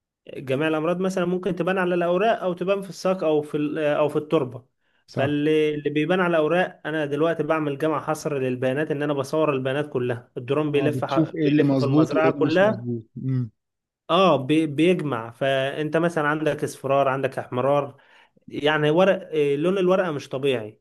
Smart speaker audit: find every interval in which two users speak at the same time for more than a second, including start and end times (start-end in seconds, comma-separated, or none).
10.7-12.9